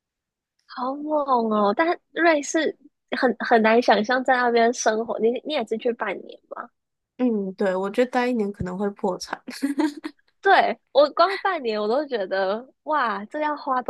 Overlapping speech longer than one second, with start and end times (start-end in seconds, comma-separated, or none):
none